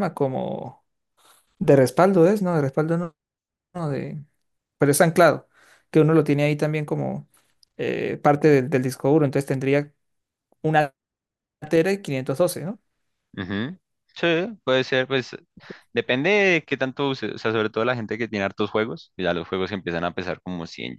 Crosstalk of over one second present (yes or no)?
no